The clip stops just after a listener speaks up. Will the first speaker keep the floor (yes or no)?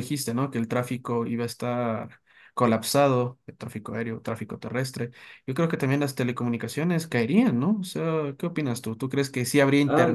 no